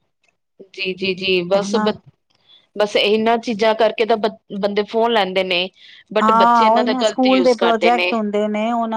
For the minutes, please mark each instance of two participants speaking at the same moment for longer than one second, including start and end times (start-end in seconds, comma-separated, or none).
6.2-7.9